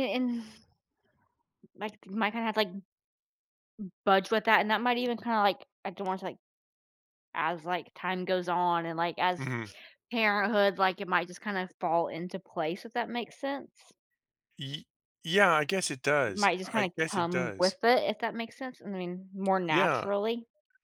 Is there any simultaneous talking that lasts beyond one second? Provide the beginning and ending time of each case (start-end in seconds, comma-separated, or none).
16.2-17.8